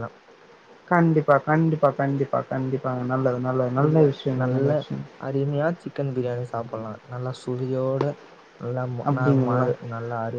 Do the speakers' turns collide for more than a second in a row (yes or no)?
no